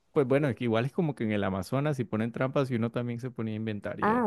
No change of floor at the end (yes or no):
no